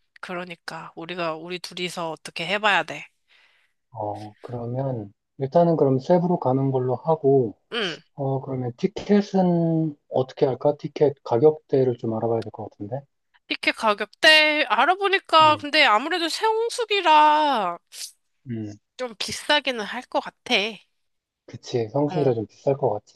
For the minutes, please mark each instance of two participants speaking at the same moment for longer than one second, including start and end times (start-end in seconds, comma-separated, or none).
none